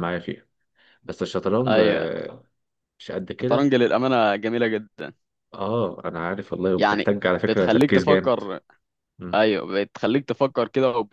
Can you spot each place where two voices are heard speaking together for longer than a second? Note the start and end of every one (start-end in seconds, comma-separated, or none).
6.8-8.4